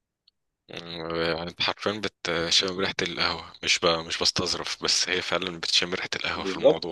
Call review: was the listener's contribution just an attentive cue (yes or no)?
no